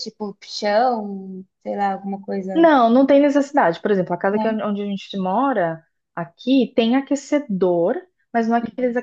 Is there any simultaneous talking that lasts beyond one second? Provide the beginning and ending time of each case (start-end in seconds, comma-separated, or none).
none